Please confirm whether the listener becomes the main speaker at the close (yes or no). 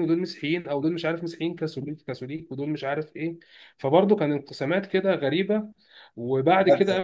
no